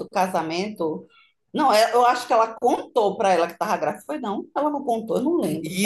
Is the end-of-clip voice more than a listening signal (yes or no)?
yes